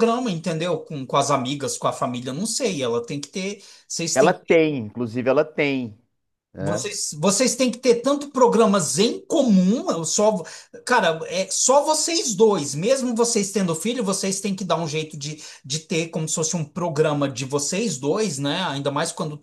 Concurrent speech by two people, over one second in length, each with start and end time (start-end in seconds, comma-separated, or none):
none